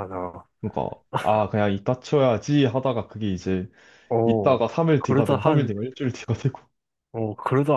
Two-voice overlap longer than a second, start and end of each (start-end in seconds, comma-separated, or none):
4.2-5.7